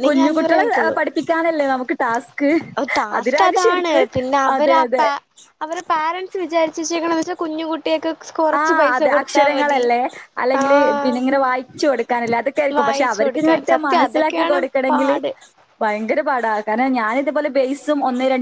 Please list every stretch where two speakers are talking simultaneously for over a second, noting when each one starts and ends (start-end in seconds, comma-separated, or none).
12.8-15.2